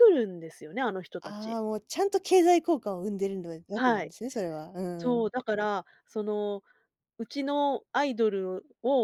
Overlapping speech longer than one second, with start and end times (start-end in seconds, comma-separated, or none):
none